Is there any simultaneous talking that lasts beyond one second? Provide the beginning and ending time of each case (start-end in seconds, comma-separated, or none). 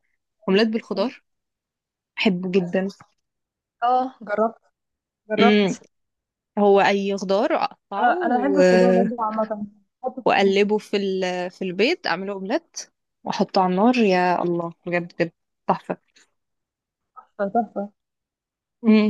none